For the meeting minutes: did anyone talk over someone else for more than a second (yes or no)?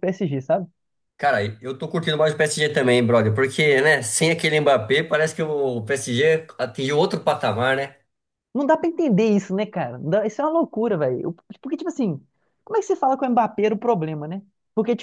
no